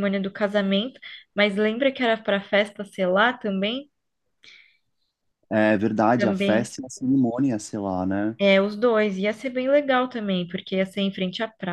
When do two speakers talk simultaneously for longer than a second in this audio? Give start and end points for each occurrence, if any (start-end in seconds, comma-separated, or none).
none